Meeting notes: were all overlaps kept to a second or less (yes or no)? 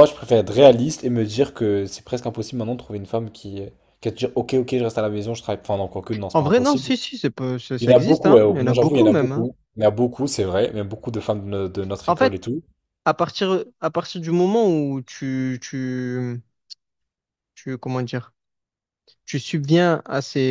no